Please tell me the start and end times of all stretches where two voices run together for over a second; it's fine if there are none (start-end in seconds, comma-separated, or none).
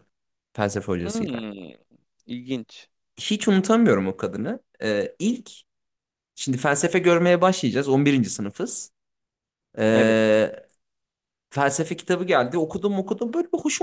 none